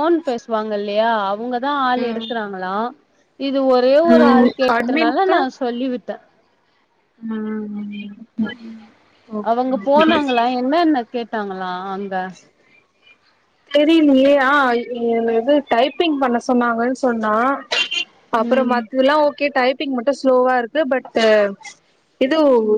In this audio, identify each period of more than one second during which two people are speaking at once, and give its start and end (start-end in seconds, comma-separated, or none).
none